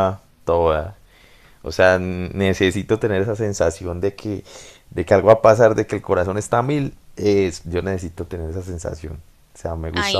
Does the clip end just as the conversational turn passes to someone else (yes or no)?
yes